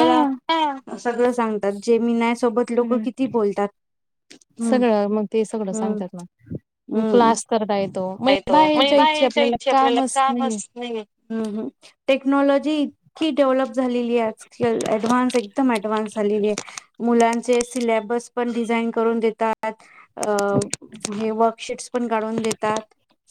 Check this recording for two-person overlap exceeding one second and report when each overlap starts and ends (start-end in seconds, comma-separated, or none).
none